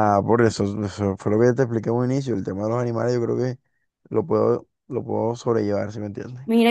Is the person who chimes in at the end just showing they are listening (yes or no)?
no